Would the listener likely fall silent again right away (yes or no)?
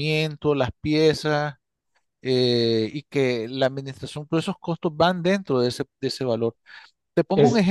no